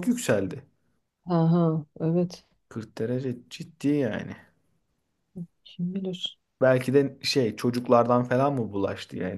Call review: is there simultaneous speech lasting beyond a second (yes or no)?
no